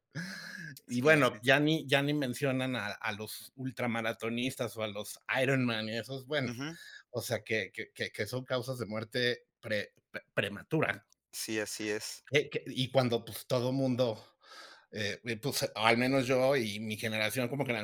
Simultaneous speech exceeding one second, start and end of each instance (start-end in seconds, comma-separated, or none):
none